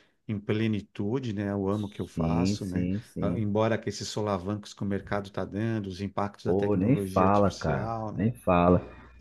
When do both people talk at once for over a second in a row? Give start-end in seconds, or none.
2.1-3.5, 6.4-8.2